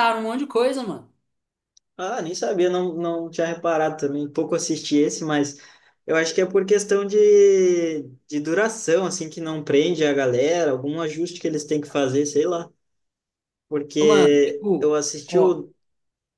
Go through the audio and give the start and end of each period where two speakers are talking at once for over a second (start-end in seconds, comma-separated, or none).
14.0-15.6